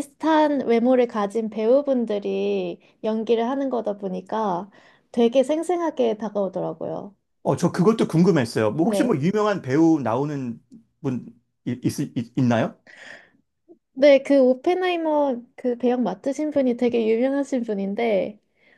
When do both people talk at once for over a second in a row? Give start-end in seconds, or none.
none